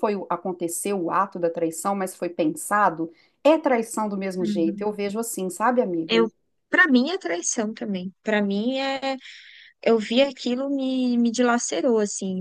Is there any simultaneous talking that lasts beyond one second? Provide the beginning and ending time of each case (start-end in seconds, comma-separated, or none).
none